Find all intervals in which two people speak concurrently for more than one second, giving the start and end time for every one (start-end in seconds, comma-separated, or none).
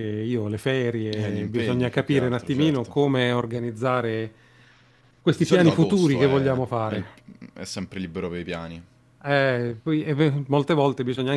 1.2-2.9, 5.3-7.0